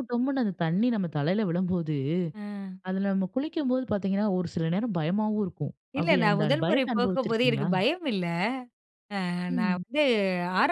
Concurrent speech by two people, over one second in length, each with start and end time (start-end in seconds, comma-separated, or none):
6.0-7.7